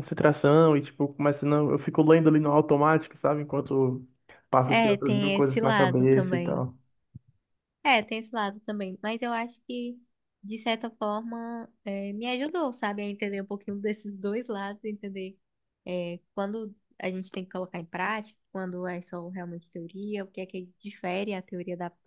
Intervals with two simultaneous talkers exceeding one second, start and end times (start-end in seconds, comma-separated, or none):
4.7-6.6